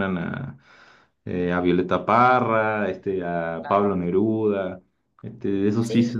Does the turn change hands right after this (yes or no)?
no